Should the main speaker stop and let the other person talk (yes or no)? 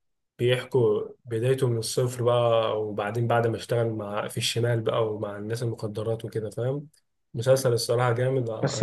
yes